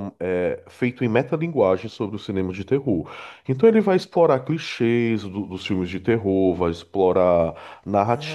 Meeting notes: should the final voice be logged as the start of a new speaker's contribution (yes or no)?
no